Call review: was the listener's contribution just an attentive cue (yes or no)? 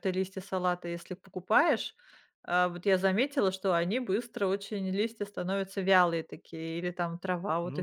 no